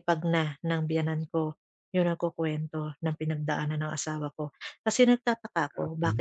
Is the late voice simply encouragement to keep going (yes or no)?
yes